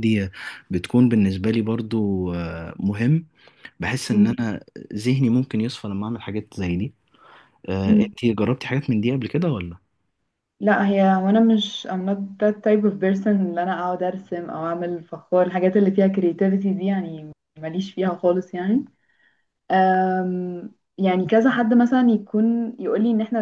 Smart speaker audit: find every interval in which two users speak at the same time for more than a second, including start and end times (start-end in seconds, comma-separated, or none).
none